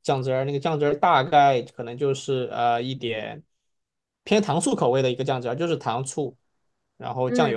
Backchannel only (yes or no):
yes